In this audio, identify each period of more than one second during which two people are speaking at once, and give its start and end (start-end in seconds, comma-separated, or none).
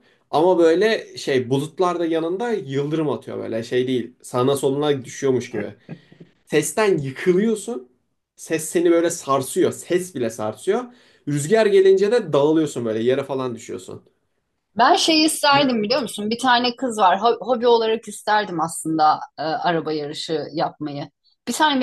none